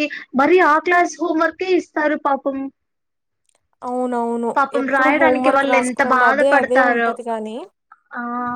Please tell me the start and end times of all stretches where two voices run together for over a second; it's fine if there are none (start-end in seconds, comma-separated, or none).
4.6-7.1